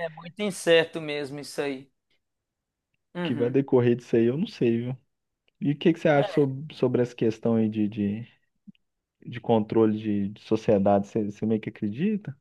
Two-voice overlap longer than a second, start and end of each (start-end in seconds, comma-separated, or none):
none